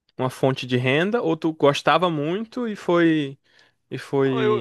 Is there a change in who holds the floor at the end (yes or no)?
yes